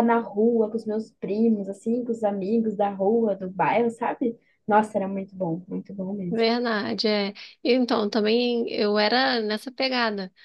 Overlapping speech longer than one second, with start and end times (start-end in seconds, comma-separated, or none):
none